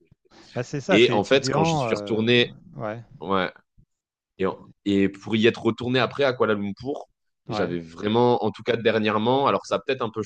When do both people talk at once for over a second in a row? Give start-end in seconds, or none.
0.9-2.3